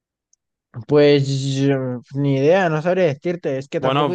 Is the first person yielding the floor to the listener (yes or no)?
yes